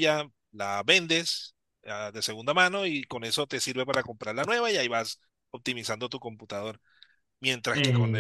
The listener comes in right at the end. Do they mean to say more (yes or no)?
no